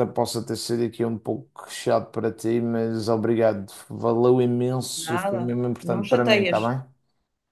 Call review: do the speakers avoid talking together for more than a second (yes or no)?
no